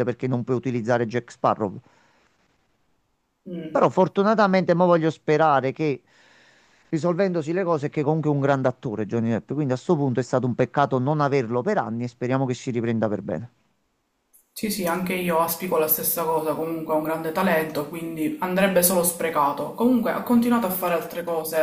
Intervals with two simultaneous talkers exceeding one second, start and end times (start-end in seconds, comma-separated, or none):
none